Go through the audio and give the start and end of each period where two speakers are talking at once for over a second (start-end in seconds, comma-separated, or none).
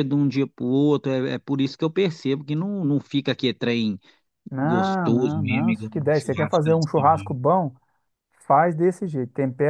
4.6-7.4